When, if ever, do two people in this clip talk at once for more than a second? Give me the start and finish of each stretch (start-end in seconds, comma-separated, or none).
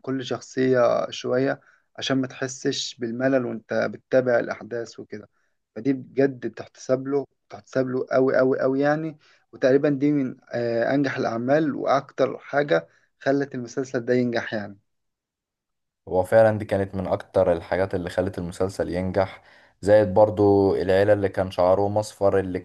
none